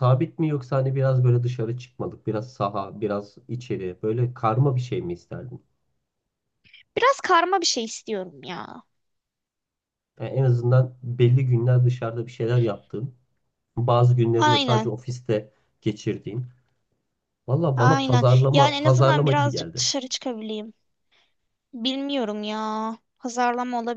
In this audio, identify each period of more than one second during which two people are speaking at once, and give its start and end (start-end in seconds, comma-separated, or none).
17.8-19.8